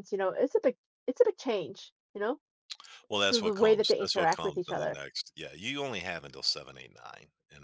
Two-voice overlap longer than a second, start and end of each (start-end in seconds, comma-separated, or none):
3.3-5.0